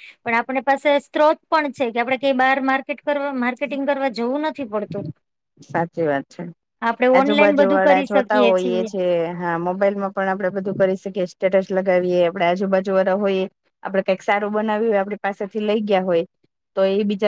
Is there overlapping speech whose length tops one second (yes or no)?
yes